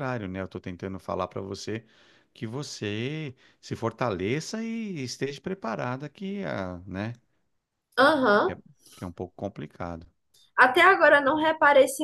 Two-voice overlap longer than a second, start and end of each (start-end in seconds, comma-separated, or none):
none